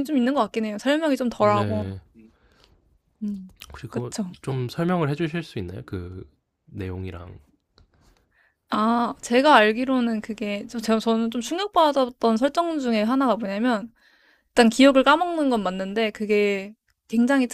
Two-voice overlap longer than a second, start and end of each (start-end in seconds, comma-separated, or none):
none